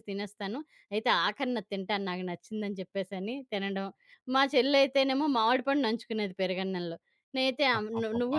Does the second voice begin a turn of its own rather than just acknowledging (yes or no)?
no